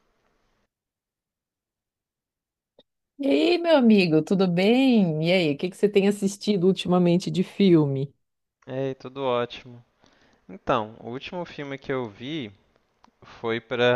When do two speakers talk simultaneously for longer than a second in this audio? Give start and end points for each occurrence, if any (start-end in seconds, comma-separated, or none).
none